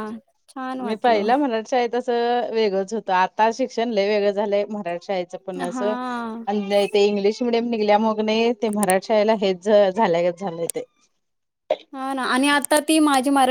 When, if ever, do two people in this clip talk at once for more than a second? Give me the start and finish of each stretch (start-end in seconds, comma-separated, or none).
none